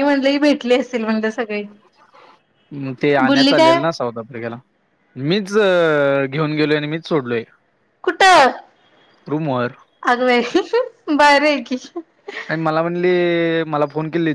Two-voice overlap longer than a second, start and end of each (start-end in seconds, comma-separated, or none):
none